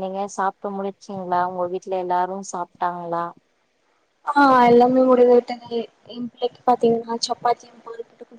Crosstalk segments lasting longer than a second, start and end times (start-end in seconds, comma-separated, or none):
none